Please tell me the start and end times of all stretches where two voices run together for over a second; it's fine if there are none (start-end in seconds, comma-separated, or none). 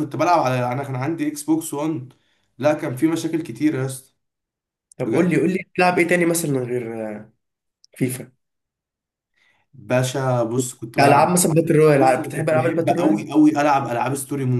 12.0-13.2